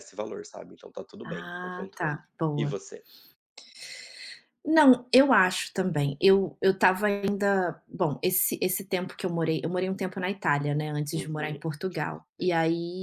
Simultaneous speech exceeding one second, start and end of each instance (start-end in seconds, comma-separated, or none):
1.2-2.8